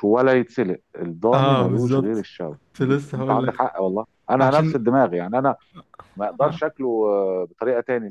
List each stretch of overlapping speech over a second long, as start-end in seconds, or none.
1.3-3.6